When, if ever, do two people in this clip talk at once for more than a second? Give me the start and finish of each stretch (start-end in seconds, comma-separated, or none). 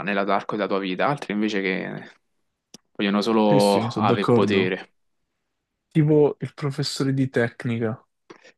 3.5-4.7